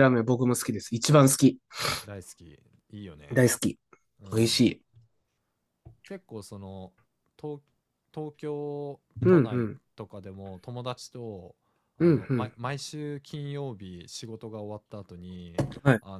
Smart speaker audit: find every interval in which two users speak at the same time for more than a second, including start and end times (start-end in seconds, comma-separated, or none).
none